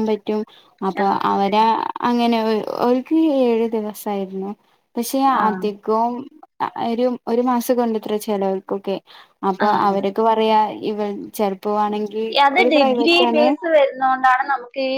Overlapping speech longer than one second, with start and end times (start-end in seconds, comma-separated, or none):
none